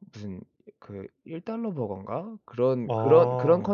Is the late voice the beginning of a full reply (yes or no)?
no